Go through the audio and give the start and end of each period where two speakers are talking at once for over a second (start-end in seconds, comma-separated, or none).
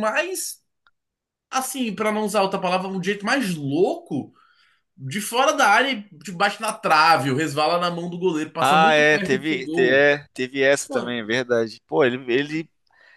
8.6-10.1